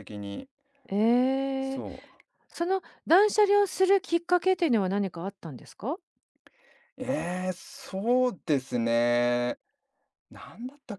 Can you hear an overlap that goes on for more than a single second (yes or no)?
no